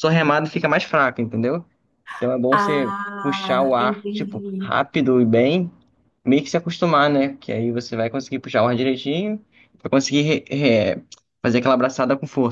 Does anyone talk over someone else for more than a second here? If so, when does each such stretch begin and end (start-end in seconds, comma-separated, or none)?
2.5-4.7